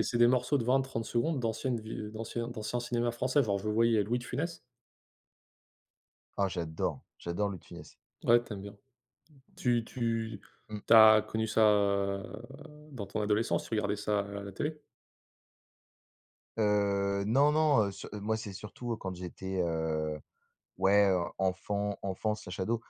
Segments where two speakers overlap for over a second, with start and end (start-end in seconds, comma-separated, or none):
none